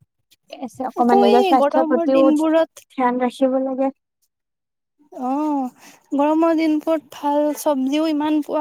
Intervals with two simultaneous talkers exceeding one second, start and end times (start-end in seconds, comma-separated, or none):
1.0-2.7